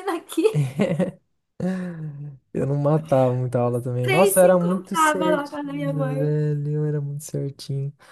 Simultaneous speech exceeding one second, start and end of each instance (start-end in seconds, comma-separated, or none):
4.0-6.3